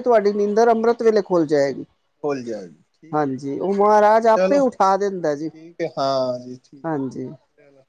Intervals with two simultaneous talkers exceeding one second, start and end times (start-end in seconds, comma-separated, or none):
none